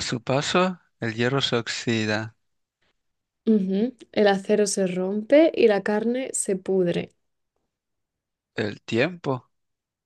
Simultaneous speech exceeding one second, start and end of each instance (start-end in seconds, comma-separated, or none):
none